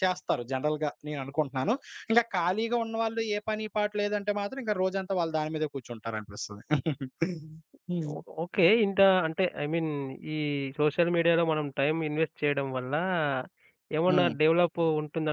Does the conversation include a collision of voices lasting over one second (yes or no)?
no